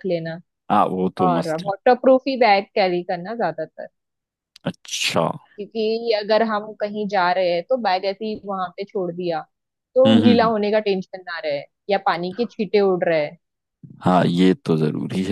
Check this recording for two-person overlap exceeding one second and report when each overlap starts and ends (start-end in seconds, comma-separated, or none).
none